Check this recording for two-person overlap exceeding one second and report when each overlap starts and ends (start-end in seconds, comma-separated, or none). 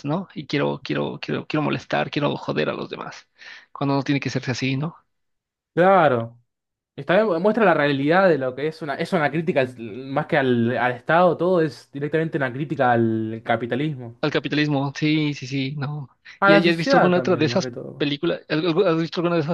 16.4-18.1